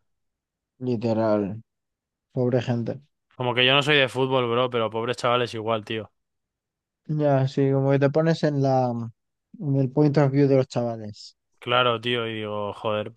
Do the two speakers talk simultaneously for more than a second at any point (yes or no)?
no